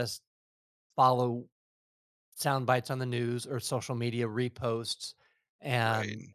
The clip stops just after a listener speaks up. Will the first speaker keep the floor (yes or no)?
yes